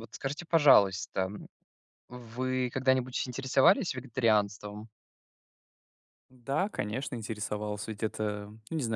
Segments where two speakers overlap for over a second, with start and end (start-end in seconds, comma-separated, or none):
none